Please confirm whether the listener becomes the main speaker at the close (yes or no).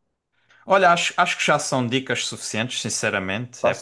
no